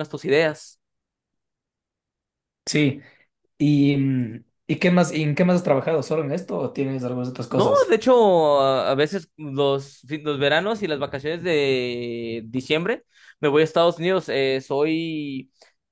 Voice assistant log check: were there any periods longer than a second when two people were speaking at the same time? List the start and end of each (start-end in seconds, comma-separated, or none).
none